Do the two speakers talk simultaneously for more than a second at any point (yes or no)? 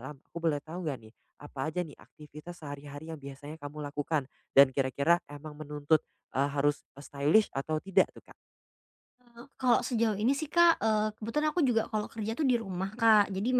no